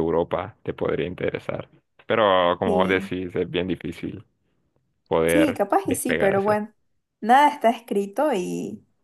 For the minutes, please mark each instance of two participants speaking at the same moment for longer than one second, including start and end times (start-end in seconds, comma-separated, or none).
5.2-6.6